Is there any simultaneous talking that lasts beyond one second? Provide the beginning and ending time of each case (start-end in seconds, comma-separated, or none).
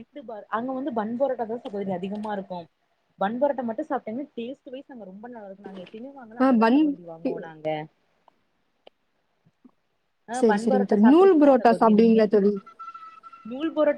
10.4-12.2